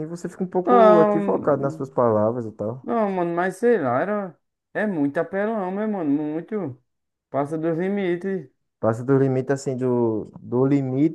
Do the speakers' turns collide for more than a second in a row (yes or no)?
yes